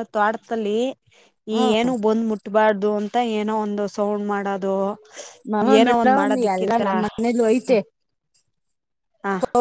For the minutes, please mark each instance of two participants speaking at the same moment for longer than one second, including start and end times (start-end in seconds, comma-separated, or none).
6.0-7.7